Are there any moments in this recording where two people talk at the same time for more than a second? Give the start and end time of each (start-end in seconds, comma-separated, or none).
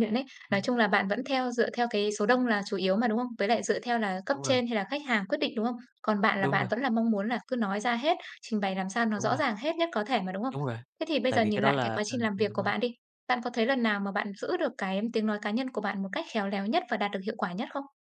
11.3-12.7